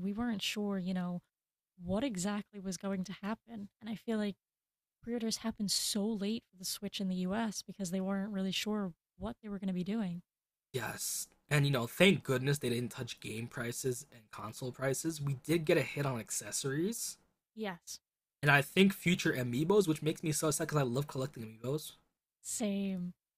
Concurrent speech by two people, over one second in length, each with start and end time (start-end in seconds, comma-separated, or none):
none